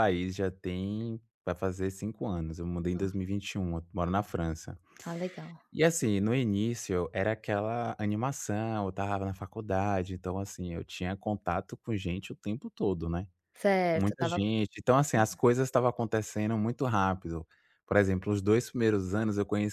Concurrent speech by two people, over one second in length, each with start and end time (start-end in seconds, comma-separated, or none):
none